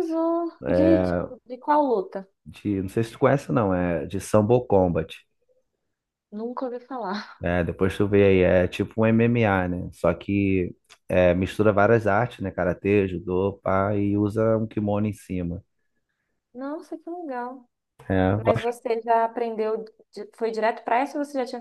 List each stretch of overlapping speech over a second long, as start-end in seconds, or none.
none